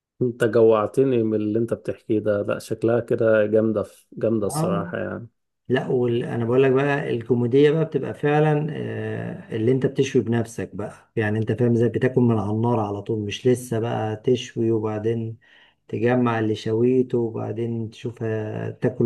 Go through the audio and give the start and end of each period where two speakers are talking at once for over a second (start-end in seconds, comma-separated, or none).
none